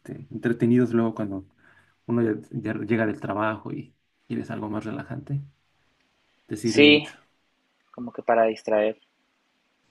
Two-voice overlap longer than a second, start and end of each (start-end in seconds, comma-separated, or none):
none